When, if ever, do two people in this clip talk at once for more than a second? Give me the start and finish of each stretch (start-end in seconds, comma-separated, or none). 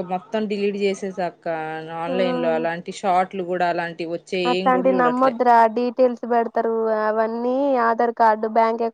none